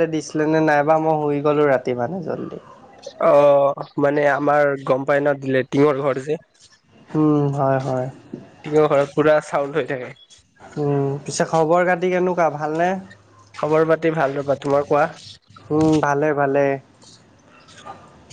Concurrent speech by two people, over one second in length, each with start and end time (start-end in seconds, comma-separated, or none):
none